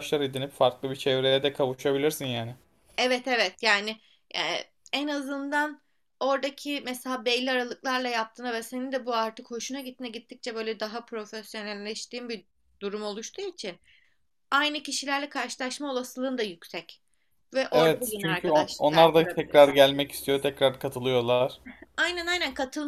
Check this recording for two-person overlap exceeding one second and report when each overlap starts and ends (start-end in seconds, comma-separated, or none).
17.7-19.8